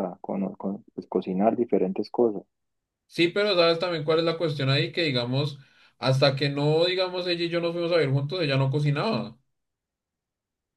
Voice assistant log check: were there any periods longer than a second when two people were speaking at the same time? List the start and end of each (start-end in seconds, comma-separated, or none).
none